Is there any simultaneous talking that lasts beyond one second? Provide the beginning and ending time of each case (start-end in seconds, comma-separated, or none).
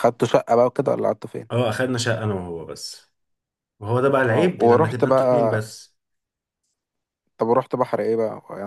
4.3-5.6